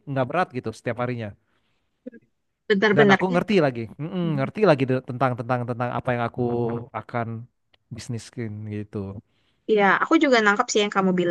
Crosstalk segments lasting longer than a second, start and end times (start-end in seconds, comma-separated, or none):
none